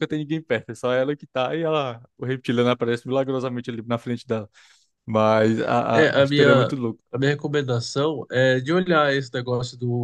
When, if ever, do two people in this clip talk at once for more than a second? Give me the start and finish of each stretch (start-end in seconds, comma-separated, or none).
none